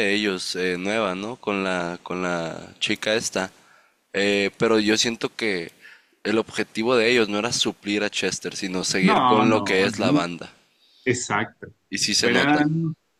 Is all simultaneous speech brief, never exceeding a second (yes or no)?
no